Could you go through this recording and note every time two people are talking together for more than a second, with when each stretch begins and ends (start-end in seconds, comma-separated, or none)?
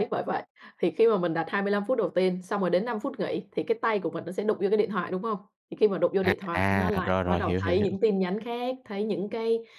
6.2-8.0